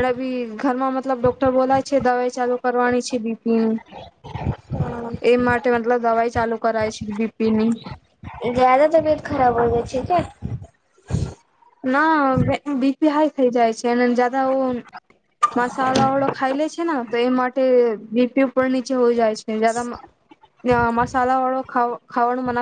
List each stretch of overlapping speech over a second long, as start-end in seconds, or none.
none